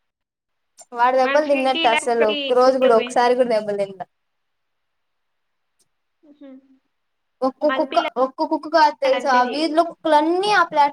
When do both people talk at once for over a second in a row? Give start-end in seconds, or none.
1.2-3.1